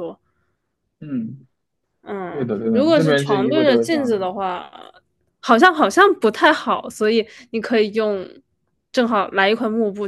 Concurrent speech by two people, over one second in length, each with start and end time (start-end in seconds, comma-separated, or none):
2.3-4.3